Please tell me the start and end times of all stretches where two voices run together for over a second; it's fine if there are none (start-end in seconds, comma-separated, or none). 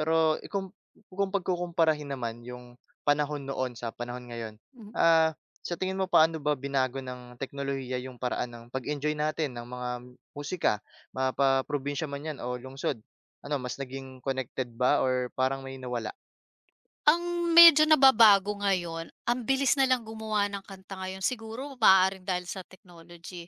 none